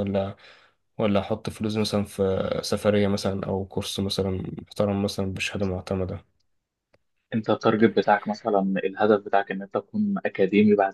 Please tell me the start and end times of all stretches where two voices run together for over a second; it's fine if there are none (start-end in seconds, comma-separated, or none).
none